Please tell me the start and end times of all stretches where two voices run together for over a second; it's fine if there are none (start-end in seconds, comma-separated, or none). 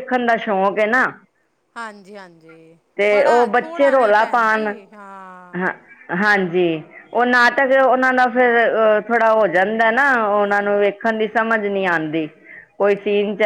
3.0-4.7